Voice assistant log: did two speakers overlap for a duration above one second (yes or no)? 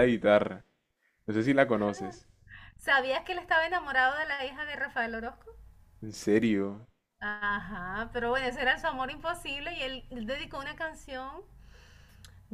no